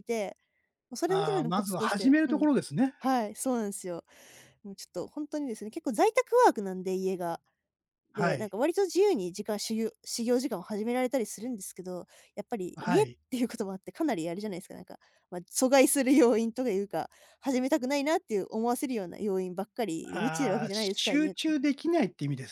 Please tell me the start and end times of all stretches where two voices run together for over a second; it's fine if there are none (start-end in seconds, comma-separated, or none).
1.1-2.5, 20.1-21.5